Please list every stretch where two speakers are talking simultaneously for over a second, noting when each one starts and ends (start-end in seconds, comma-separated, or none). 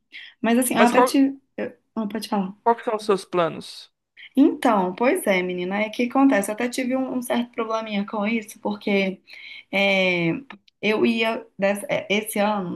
none